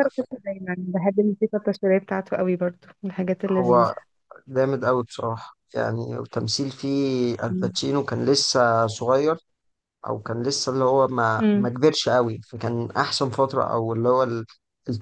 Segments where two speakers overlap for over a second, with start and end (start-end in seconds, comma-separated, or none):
none